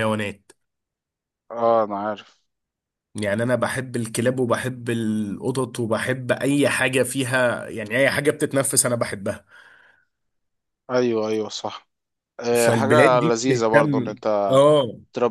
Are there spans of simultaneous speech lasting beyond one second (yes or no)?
yes